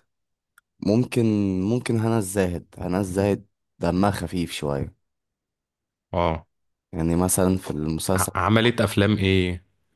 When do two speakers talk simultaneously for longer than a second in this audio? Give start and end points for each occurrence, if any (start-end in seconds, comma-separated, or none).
none